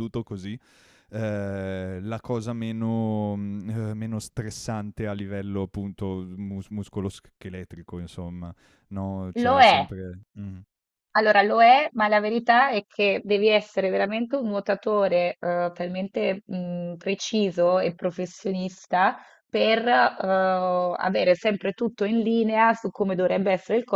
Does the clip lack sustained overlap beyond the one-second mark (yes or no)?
yes